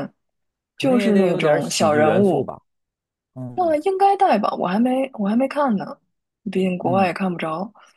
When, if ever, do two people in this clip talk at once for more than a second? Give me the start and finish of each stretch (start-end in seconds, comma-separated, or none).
0.8-2.5